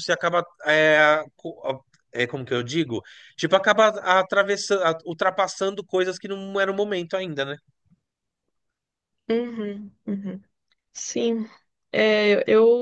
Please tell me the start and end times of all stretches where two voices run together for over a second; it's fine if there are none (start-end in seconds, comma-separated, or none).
none